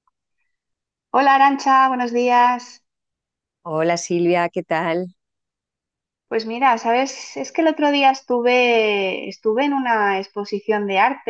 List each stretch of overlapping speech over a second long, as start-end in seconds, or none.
none